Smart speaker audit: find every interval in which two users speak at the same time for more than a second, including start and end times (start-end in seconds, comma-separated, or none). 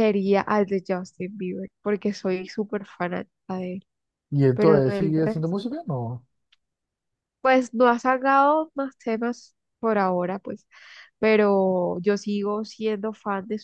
4.5-5.8